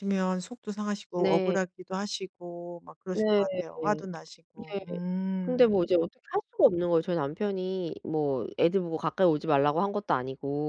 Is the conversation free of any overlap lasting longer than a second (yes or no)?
yes